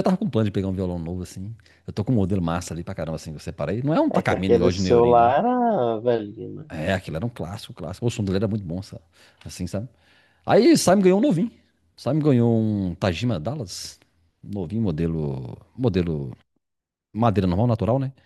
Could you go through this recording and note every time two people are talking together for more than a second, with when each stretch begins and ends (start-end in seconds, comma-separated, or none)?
4.1-5.3